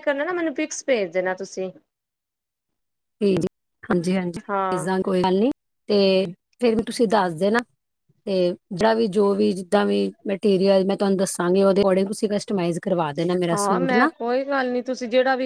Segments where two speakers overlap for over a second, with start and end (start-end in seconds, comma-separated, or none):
none